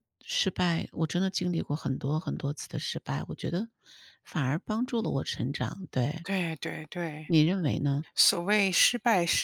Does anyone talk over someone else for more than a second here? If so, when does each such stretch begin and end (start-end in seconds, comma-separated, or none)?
none